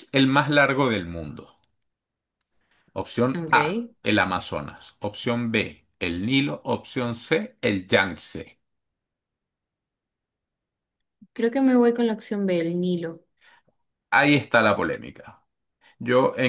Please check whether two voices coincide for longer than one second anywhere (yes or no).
no